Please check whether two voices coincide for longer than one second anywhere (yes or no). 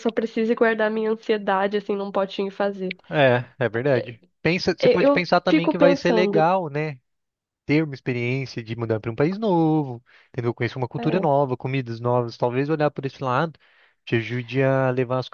yes